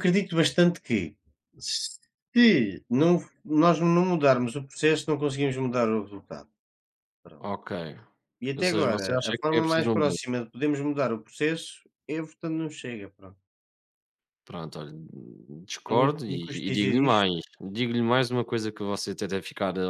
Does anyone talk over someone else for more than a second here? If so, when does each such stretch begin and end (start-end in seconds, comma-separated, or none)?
8.6-10.4, 15.8-17.3